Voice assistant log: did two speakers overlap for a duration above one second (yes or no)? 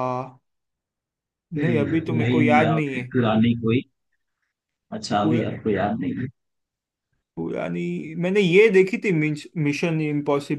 yes